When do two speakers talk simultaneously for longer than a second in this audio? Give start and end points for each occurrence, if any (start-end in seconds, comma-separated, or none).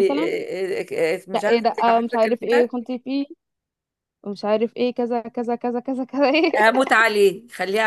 1.3-2.7